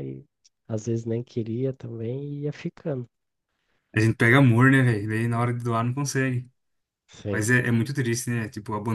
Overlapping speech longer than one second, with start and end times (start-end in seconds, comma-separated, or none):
none